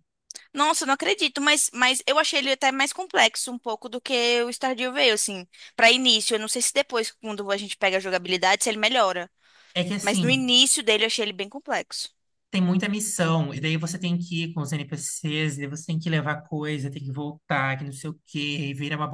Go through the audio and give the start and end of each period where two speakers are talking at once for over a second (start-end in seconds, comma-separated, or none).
none